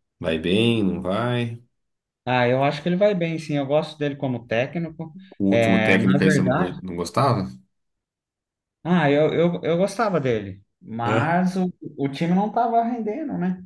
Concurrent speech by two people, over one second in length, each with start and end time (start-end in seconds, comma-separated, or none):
5.4-6.8